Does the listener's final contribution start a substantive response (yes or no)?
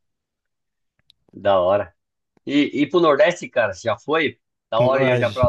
yes